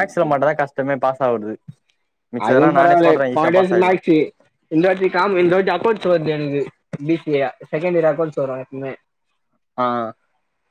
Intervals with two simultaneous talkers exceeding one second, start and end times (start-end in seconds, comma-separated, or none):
2.5-4.0